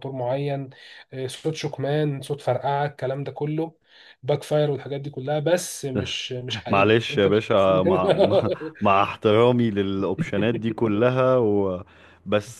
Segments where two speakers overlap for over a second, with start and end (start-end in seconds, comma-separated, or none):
6.7-8.0